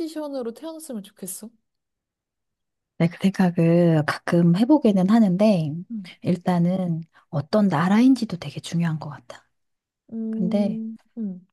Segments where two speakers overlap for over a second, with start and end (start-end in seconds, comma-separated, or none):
none